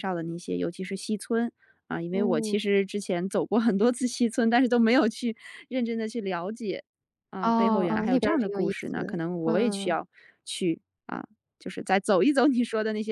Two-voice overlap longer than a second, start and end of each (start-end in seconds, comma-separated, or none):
7.4-10.0